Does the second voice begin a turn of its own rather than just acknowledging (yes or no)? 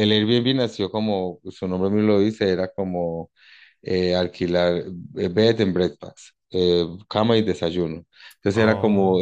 no